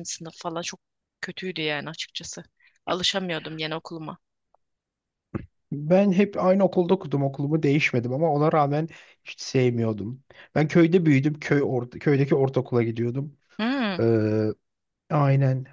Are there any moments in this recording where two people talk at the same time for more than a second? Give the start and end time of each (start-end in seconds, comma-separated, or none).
none